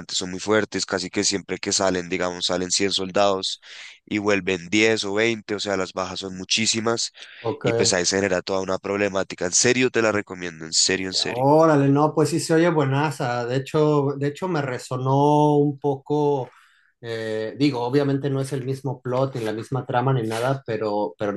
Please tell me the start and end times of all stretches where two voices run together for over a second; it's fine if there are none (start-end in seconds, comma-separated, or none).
none